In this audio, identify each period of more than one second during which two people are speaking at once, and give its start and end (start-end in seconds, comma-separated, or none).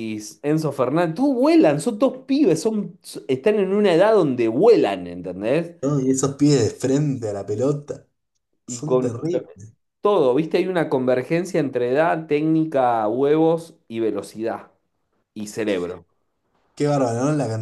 none